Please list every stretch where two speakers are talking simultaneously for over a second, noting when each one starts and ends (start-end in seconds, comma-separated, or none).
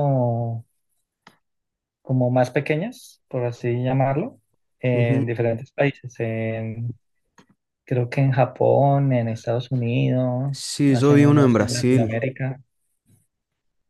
10.5-12.2